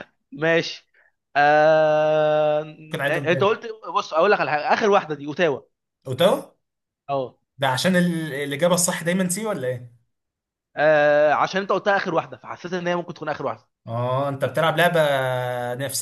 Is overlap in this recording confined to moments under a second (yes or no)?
yes